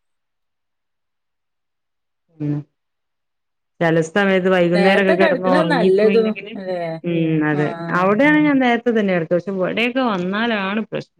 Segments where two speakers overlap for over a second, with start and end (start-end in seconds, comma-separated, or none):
4.8-6.5